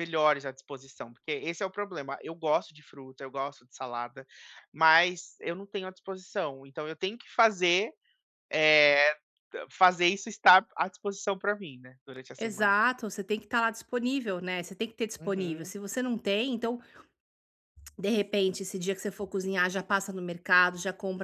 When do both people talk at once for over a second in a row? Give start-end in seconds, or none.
none